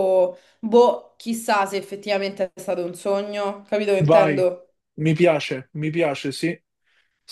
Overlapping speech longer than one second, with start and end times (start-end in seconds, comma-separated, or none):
none